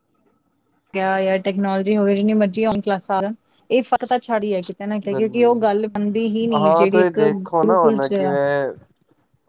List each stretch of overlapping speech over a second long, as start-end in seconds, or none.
6.7-8.1